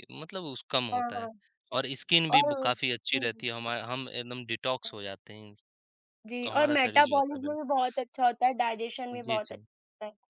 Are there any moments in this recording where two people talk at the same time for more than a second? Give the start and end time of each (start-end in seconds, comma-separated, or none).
6.4-7.7